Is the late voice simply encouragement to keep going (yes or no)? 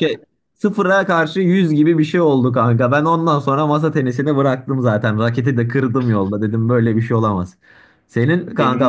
yes